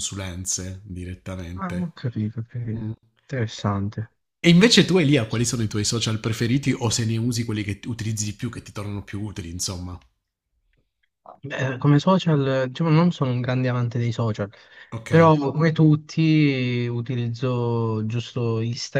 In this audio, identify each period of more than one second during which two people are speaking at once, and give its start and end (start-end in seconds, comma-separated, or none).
none